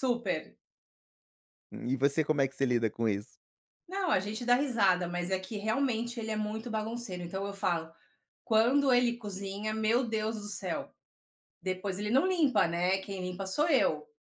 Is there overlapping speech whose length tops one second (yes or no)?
no